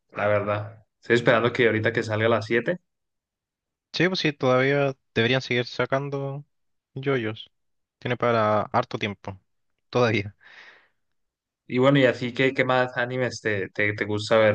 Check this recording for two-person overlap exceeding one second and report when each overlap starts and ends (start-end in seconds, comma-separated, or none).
none